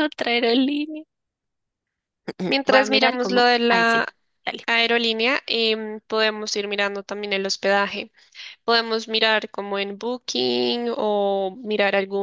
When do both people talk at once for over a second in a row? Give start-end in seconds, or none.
2.5-4.0